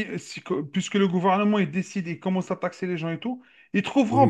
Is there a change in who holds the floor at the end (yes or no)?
no